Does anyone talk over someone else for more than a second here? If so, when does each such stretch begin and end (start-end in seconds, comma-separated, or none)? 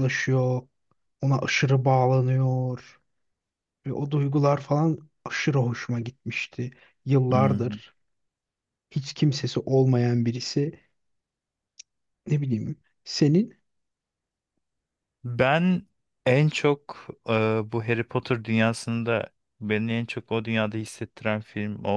none